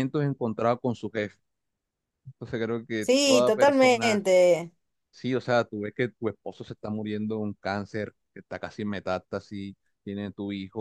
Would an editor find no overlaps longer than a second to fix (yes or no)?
no